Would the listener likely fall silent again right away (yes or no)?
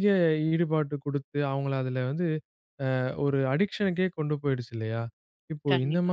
yes